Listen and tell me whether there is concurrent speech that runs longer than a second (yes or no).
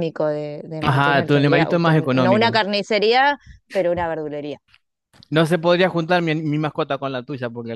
yes